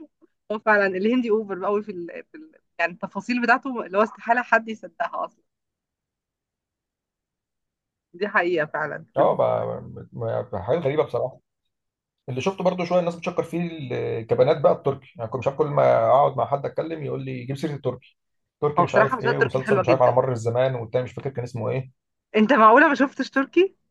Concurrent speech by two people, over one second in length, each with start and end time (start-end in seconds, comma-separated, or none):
18.8-20.2